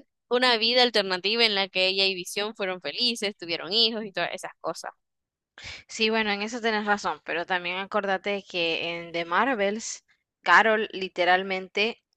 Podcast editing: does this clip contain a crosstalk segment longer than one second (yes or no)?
no